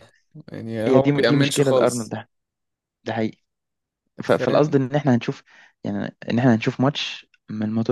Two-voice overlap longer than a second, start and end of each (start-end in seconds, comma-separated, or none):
0.9-2.1